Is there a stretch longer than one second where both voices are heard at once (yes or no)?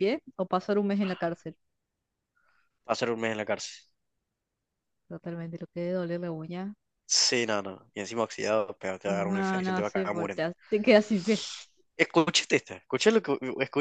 yes